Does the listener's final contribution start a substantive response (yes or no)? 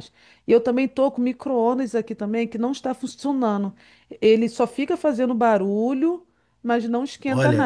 yes